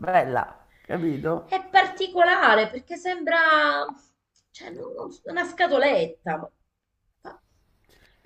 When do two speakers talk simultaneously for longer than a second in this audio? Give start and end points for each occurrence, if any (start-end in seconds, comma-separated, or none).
none